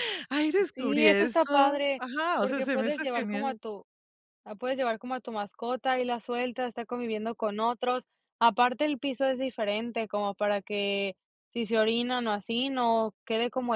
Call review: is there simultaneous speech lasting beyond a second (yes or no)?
yes